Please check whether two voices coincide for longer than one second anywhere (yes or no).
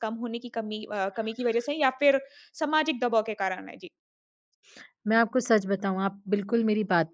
no